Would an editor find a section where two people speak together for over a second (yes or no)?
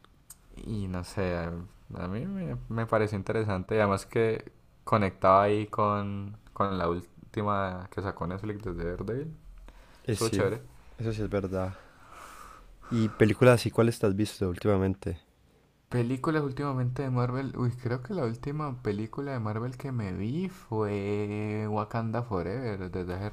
no